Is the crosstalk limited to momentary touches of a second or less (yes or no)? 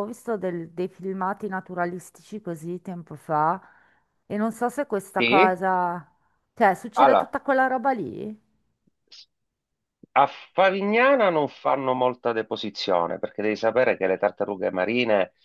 yes